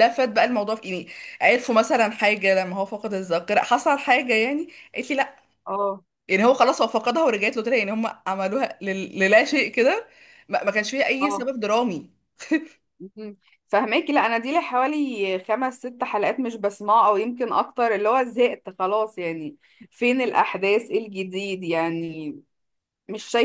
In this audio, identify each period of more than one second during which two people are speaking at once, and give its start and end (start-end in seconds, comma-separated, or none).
none